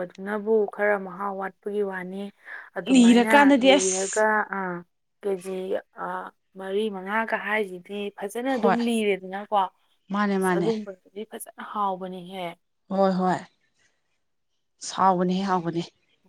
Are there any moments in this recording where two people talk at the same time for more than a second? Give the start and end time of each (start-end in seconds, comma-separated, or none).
2.9-4.2